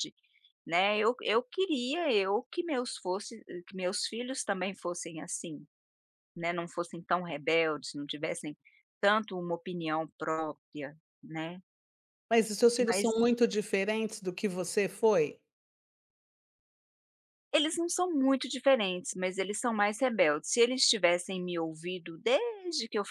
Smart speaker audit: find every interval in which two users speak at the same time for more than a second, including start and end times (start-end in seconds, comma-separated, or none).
none